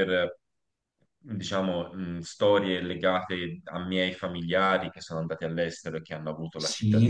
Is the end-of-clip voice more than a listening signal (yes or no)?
yes